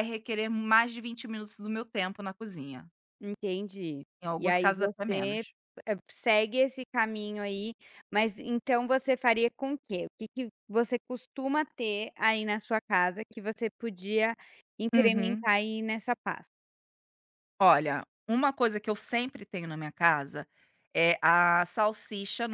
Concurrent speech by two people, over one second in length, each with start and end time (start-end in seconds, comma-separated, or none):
4.2-5.4